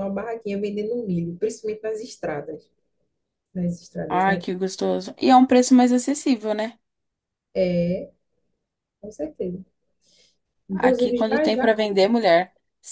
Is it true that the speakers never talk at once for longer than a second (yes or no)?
no